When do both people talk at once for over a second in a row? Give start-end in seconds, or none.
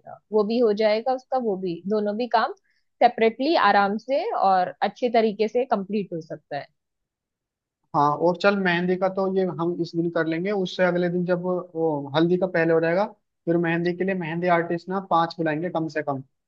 none